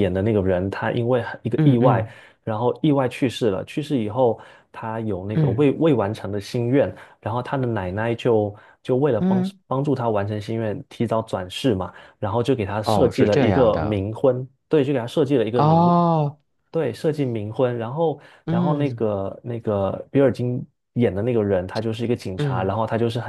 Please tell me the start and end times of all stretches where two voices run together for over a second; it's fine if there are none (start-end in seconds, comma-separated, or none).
12.8-14.0